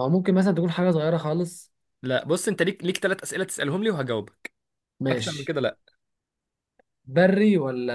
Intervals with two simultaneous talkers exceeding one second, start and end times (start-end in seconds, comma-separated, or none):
none